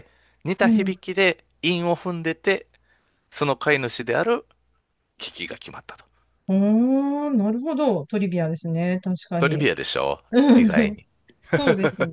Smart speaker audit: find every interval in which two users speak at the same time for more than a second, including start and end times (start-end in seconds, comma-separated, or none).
none